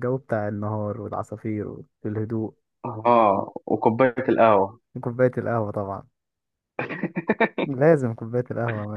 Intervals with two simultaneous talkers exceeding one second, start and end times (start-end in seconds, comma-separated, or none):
none